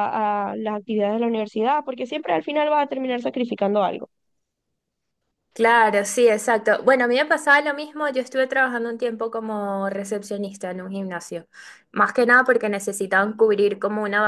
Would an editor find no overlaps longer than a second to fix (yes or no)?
yes